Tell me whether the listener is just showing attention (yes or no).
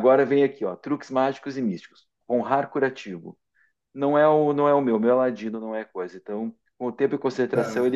yes